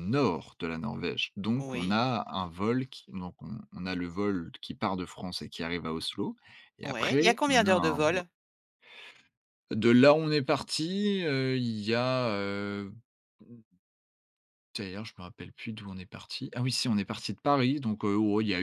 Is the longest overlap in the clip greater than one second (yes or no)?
yes